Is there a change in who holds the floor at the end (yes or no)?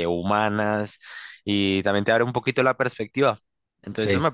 yes